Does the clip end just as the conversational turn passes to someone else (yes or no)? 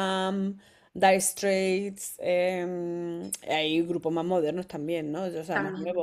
no